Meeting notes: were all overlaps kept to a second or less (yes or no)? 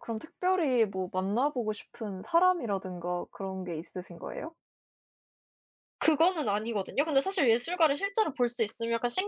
yes